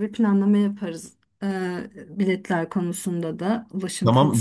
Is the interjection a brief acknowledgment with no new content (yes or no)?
no